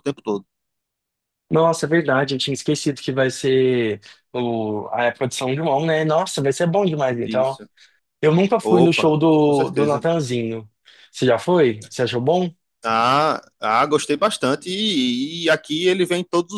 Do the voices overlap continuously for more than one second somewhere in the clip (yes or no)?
yes